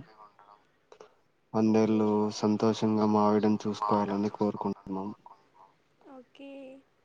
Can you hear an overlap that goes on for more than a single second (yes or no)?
yes